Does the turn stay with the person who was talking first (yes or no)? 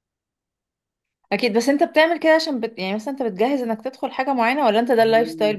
no